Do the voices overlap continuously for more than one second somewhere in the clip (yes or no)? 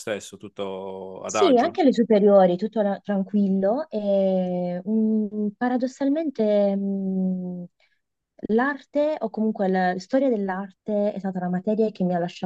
no